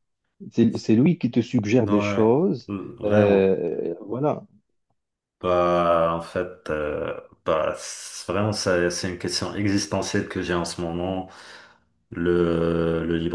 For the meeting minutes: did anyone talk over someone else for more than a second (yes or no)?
yes